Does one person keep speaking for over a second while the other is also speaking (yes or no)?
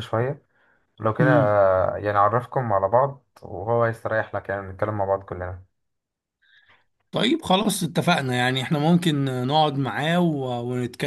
no